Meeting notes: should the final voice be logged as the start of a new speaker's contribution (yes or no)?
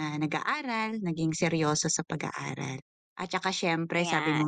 no